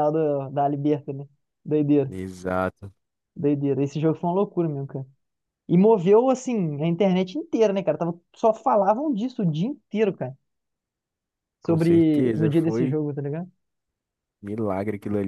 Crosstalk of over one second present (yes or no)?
yes